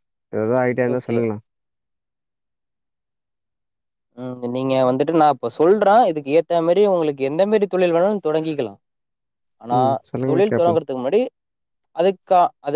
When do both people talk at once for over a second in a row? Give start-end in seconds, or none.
none